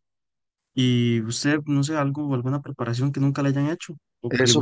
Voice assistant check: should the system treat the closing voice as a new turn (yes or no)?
yes